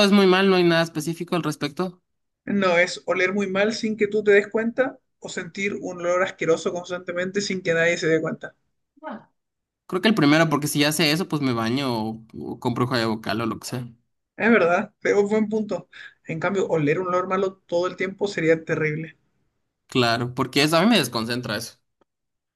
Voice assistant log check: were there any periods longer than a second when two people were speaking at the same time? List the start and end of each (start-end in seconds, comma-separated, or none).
none